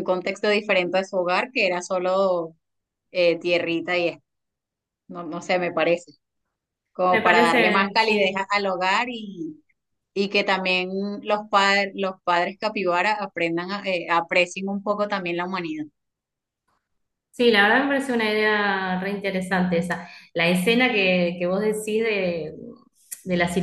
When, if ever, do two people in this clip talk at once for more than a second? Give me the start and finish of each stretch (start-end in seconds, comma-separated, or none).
7.1-8.4